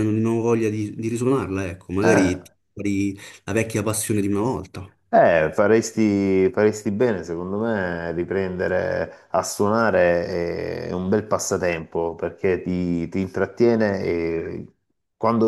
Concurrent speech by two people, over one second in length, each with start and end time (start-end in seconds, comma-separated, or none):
none